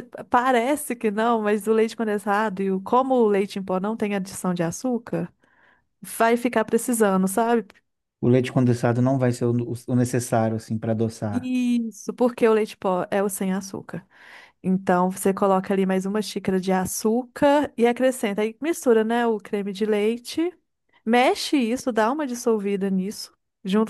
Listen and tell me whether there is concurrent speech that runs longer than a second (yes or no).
no